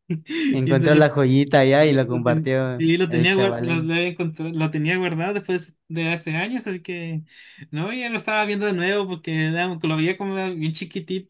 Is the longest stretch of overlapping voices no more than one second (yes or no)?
no